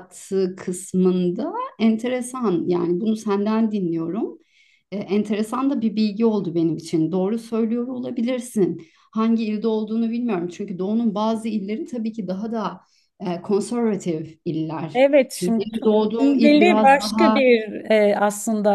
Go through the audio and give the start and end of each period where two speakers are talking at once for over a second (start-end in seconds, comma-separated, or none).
14.9-17.4